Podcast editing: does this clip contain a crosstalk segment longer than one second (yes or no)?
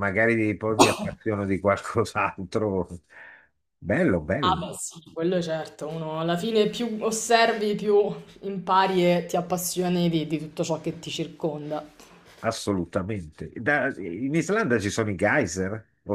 no